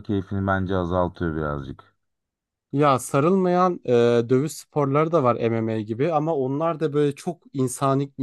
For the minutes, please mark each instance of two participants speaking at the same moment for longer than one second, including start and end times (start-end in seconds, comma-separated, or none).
none